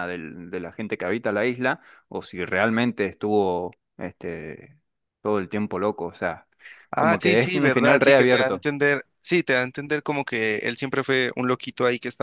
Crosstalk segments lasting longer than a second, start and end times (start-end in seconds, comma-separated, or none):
7.0-8.7